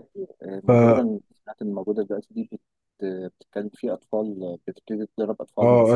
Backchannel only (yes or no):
no